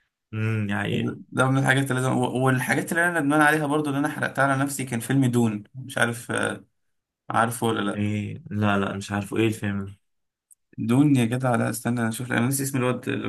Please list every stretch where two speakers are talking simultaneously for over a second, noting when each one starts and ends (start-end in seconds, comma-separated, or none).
none